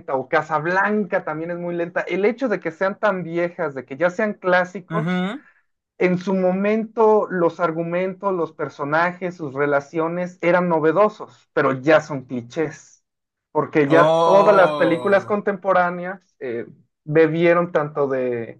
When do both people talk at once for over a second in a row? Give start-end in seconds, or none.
13.9-15.4